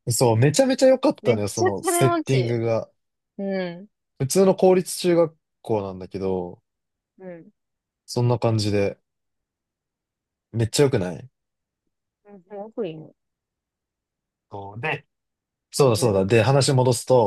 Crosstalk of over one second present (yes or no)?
yes